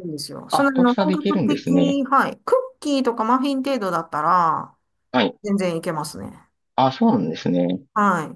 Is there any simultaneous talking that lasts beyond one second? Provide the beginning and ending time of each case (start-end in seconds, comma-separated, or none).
0.5-2.0